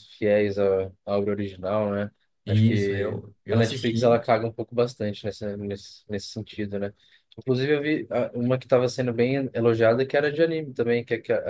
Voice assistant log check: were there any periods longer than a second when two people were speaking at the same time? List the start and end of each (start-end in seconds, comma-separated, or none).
2.5-4.2